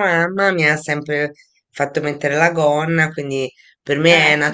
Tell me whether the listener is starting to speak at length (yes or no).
no